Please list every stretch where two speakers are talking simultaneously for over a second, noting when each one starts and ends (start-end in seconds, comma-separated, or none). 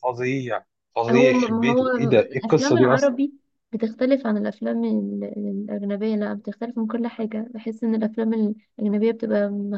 1.1-3.1